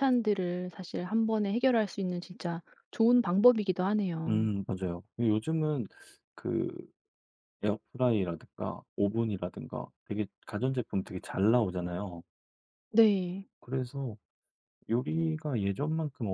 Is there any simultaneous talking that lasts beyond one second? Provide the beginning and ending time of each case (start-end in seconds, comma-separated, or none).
none